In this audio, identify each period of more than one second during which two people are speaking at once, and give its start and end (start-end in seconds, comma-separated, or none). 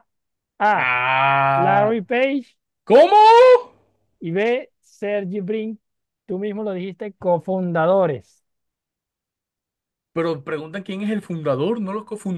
none